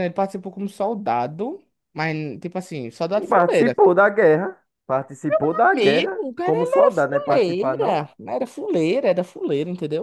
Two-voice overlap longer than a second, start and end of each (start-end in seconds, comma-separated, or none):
5.7-8.0